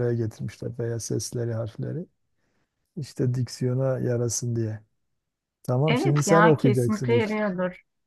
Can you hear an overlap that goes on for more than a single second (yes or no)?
yes